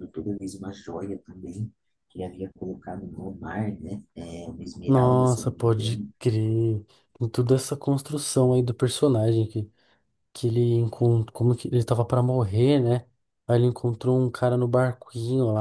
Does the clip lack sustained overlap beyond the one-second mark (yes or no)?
no